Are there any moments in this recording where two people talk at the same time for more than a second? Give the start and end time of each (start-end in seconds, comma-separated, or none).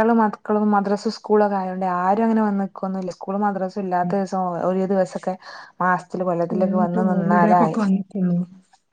6.5-7.8